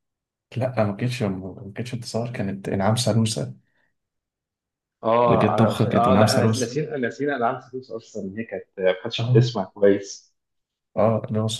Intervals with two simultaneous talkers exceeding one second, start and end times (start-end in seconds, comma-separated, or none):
5.2-6.8